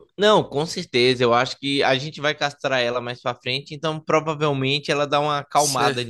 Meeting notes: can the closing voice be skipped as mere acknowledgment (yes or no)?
no